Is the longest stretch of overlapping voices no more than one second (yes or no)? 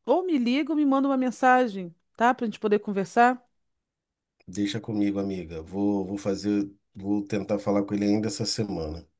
yes